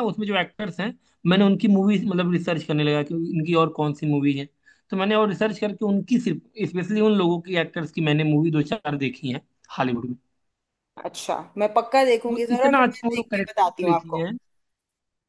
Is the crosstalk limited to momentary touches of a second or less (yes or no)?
no